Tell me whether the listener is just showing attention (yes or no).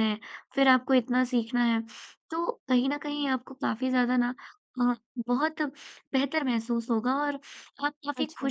yes